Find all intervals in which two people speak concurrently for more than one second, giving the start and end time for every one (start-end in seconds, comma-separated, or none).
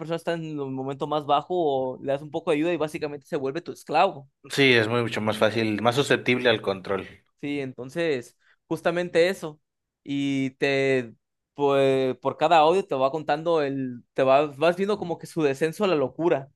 none